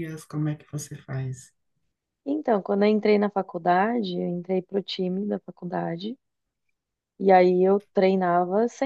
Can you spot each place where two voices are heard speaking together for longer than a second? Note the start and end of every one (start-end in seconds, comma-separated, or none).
none